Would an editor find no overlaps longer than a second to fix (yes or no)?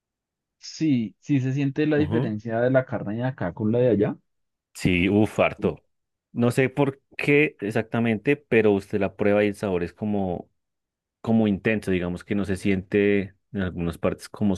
yes